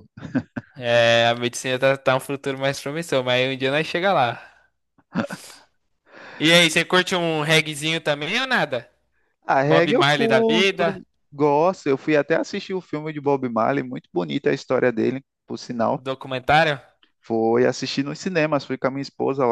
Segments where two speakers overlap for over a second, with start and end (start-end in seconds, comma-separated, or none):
9.6-11.0